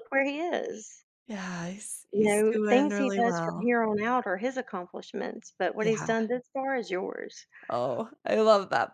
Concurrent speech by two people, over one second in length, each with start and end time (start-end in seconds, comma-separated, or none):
2.1-3.7